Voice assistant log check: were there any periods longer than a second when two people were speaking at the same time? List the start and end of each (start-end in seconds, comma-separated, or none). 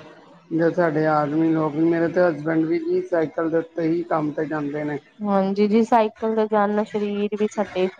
none